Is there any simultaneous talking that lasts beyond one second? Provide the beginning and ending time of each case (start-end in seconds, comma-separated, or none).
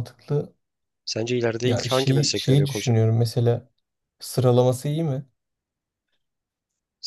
1.6-3.0